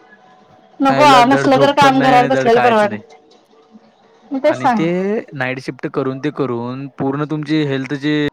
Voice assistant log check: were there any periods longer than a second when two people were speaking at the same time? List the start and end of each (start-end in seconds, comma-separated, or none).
0.9-3.0